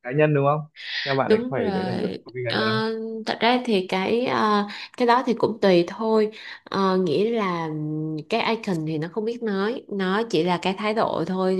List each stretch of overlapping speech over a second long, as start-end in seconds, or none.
1.3-2.8